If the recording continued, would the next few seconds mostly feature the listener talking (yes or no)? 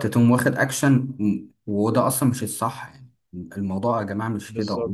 no